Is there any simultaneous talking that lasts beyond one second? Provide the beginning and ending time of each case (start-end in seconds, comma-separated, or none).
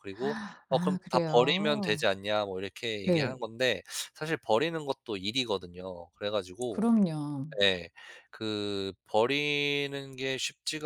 0.7-2.0